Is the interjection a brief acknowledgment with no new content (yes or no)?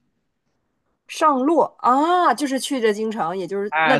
no